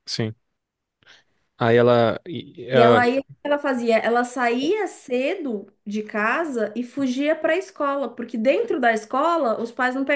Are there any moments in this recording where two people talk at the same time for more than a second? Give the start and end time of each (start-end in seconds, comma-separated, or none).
none